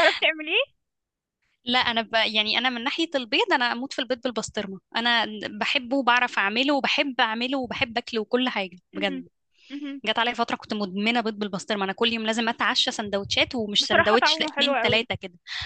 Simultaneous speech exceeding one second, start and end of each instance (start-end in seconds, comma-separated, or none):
13.8-15.1